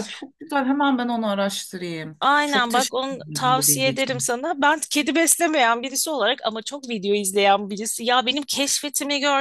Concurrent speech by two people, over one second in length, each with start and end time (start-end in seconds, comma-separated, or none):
2.2-4.3